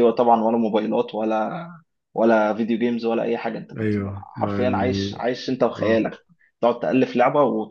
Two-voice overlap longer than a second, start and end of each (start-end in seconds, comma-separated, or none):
3.8-5.2